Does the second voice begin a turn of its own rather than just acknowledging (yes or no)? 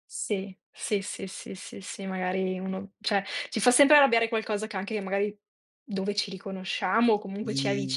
yes